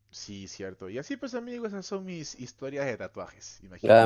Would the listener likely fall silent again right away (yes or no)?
no